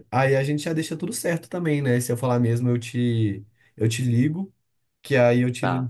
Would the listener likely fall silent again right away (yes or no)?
yes